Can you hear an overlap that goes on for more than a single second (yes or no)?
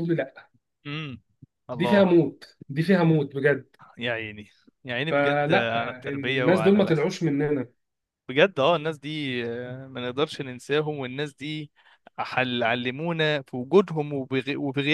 yes